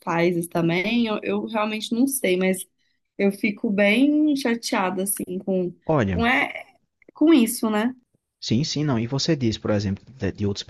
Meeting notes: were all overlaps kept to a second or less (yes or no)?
yes